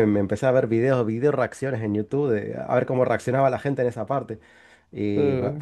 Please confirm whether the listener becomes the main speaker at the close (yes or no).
no